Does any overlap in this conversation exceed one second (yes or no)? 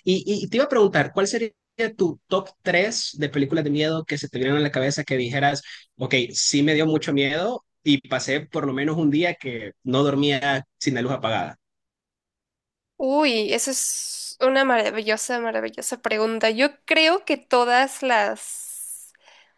no